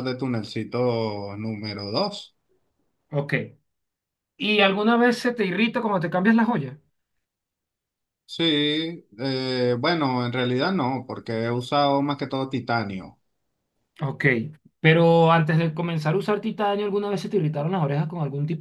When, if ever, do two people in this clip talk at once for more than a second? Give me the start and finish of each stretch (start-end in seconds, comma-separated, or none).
none